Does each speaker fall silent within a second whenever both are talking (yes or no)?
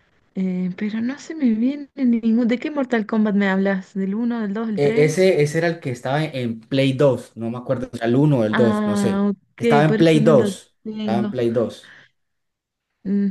no